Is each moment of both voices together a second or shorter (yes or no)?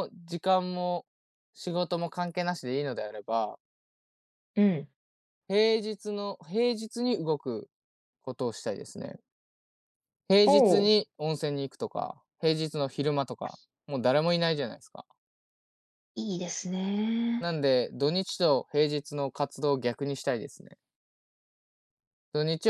yes